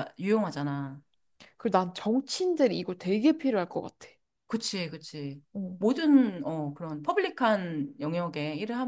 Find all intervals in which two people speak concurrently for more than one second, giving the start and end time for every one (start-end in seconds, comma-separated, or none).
none